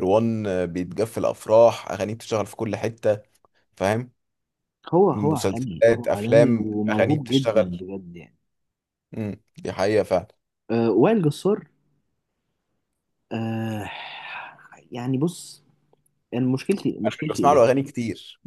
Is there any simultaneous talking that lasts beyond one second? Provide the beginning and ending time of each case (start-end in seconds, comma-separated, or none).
5.1-7.8